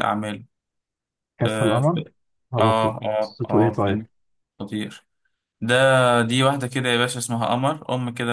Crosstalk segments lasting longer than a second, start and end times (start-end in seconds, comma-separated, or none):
2.6-4.0